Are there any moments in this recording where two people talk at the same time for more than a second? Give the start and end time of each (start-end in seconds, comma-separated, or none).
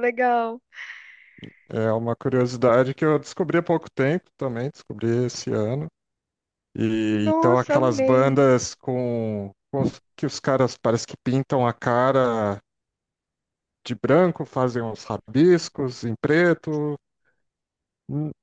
7.1-8.4